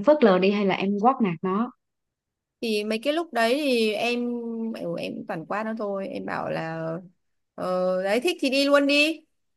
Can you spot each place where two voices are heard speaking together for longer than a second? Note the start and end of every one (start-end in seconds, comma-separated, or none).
none